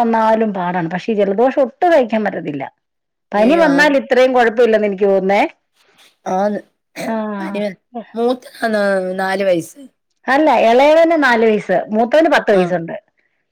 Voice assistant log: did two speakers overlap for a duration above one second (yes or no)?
no